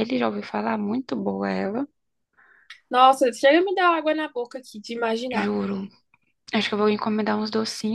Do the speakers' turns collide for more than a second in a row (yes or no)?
no